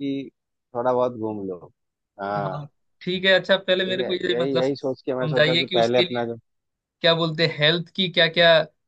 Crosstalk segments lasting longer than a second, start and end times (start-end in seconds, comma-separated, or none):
3.9-6.2